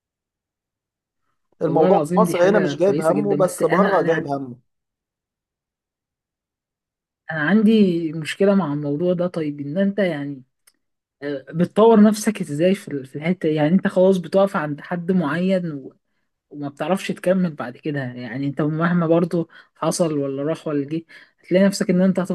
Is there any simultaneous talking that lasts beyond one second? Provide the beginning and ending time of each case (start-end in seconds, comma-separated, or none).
1.6-4.3